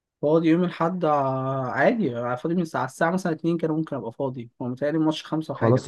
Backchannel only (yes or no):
no